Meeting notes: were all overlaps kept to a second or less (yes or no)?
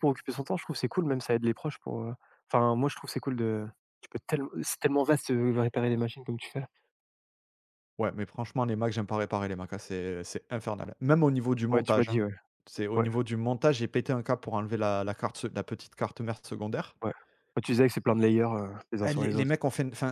yes